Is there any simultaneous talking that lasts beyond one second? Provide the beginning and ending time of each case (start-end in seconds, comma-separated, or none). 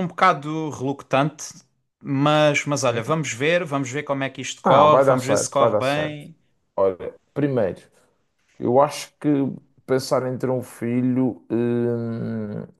4.6-6.2